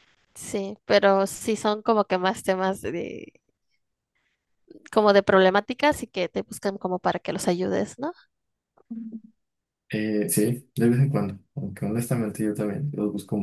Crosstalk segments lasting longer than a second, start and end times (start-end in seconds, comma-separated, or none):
none